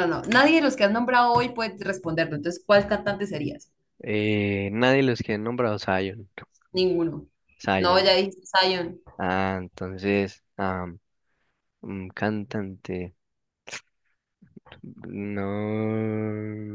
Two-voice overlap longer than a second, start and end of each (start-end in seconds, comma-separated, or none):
none